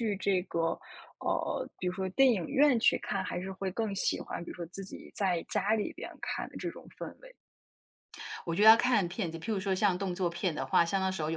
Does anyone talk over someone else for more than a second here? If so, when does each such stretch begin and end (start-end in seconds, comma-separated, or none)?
none